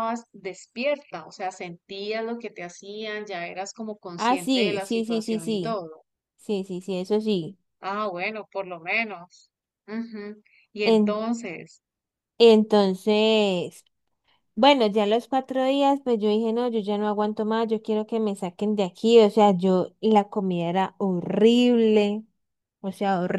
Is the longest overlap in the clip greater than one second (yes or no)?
yes